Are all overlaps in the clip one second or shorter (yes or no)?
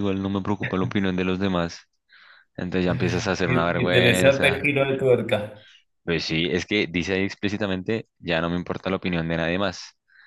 no